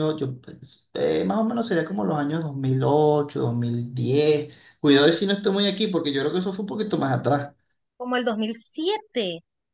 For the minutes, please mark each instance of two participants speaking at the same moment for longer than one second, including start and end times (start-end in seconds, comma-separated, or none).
none